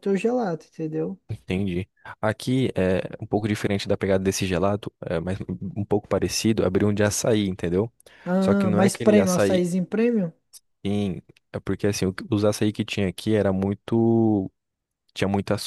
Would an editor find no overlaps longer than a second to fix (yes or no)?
no